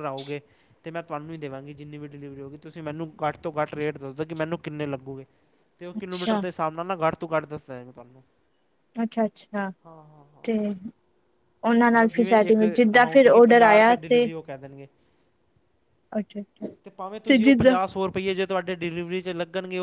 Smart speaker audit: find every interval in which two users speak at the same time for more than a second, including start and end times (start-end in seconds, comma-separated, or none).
11.9-14.2